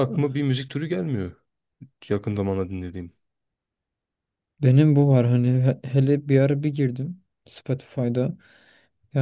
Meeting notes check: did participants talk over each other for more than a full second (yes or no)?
no